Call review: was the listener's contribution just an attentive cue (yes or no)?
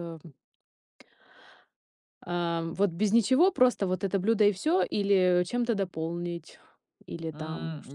no